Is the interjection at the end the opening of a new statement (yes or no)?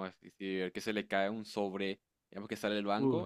no